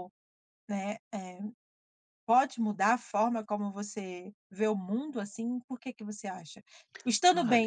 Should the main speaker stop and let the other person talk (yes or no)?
no